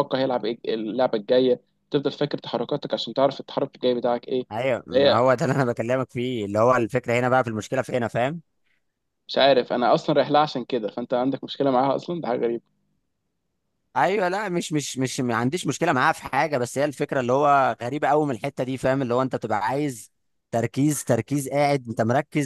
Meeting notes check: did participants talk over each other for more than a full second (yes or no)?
no